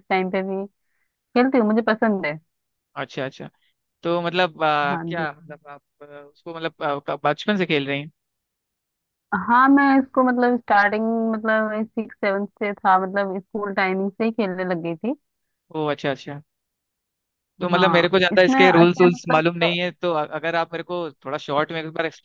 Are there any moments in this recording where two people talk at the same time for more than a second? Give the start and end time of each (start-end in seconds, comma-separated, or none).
17.7-19.4